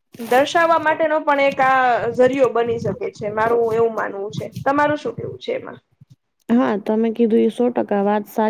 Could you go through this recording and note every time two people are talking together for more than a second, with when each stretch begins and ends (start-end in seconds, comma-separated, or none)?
none